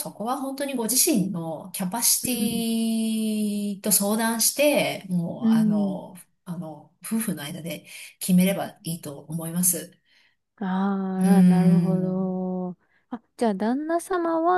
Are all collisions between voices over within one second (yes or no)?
no